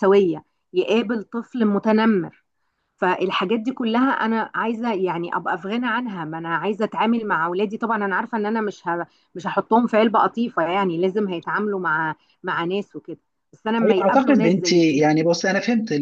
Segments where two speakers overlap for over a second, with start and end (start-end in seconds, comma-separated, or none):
13.8-15.0